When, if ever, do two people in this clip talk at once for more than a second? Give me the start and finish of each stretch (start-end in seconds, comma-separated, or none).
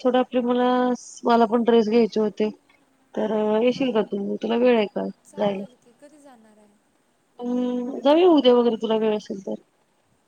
none